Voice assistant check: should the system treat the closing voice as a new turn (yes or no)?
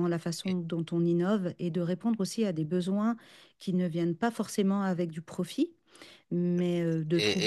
yes